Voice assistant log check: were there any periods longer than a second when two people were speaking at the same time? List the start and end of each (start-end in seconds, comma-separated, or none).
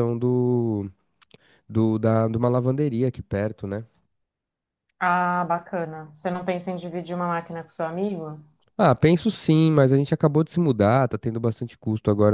none